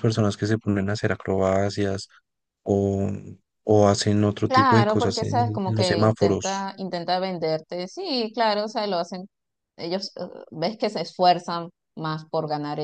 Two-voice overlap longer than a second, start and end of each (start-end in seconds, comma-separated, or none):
4.5-6.7